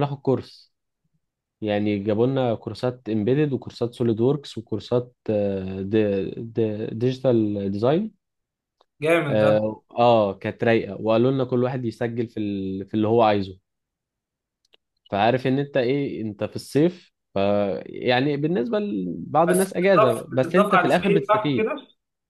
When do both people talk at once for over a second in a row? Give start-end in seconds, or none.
19.5-21.7